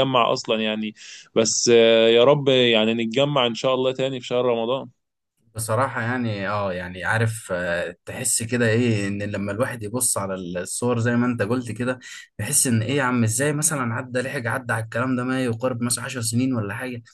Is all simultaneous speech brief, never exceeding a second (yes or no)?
yes